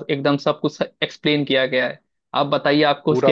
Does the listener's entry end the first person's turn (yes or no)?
no